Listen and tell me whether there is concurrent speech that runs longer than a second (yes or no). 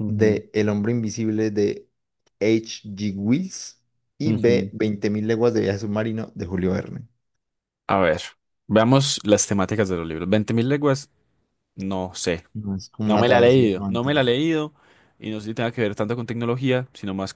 yes